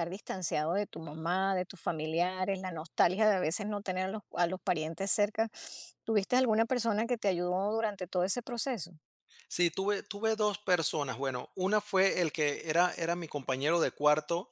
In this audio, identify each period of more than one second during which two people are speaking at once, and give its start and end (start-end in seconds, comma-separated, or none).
none